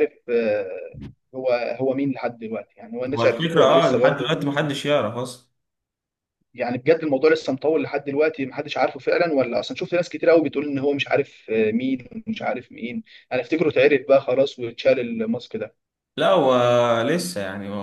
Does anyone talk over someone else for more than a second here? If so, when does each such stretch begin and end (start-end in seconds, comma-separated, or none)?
3.1-4.3